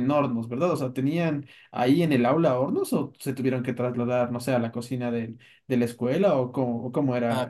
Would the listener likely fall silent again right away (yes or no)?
no